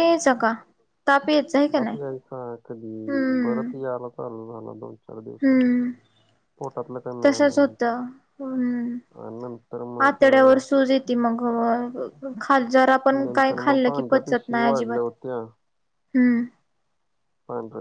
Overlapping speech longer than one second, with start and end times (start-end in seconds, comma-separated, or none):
13.2-15.1